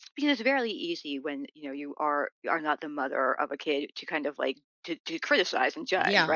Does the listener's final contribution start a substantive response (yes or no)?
yes